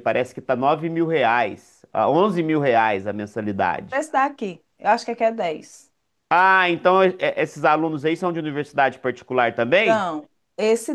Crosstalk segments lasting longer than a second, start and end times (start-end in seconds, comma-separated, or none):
none